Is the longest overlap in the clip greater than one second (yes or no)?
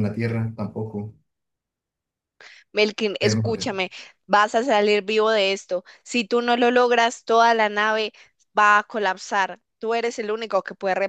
no